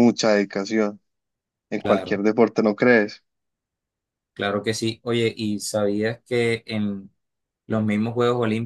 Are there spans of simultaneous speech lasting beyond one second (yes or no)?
no